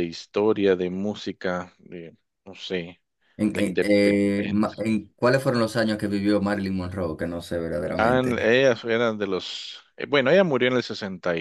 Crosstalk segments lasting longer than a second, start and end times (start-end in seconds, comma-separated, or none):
3.5-4.8